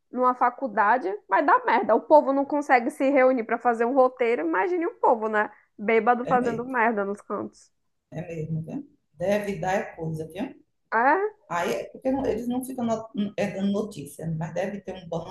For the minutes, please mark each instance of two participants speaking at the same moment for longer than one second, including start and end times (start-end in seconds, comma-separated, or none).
none